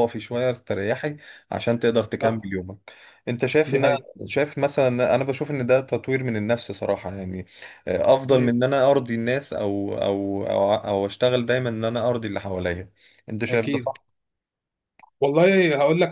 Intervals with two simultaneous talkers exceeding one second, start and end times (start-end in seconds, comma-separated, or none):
none